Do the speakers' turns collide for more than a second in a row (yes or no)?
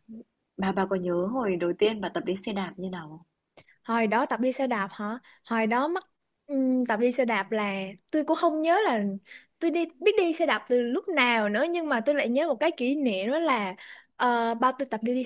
no